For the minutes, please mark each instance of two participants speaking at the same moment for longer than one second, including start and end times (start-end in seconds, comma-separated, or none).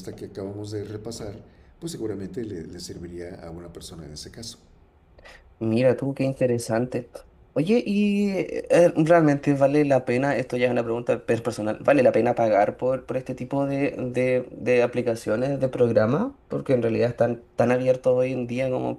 none